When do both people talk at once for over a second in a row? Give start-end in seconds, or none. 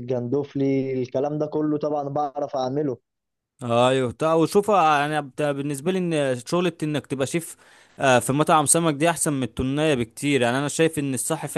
none